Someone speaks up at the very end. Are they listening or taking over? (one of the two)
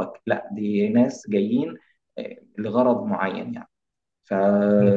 listening